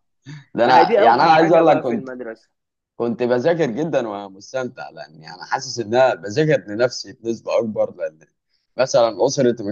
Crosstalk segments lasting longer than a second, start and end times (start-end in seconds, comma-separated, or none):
0.7-2.1